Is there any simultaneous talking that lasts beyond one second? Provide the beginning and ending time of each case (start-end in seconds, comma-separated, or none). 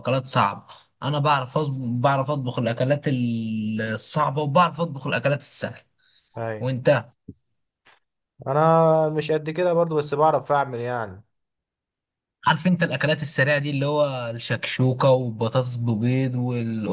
none